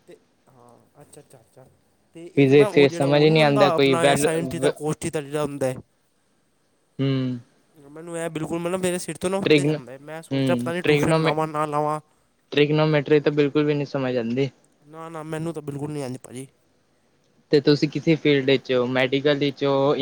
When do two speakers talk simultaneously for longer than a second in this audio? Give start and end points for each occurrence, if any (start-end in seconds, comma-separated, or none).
2.4-4.3